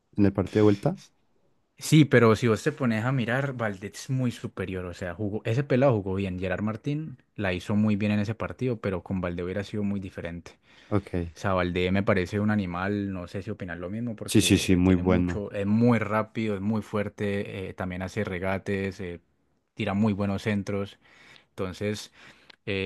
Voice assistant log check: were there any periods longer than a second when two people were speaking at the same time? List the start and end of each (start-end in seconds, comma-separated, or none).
14.2-15.4